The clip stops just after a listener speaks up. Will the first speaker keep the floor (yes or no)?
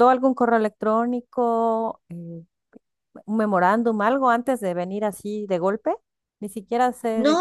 no